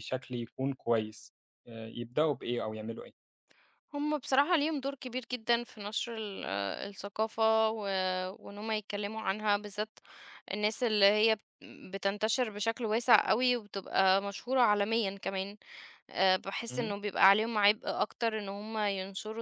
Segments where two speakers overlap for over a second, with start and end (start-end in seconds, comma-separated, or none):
none